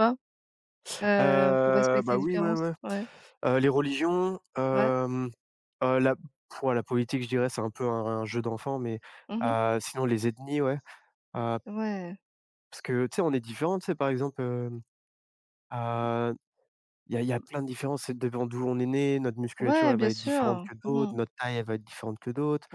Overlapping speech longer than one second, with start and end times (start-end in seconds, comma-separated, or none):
1.2-2.7, 19.6-21.1